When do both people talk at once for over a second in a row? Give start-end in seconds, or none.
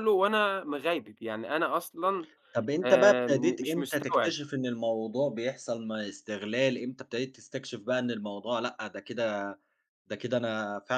2.8-4.4